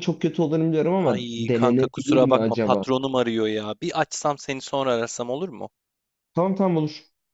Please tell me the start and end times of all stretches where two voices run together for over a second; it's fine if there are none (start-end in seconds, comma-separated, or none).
1.1-2.9